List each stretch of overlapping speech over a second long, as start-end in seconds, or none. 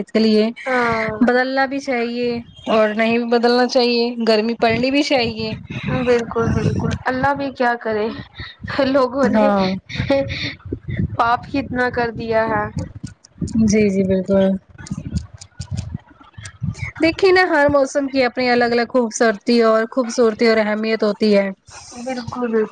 none